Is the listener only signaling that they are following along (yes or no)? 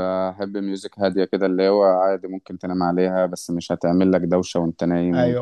no